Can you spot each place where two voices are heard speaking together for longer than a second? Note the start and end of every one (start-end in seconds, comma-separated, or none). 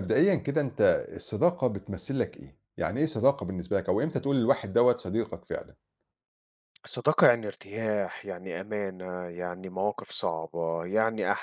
none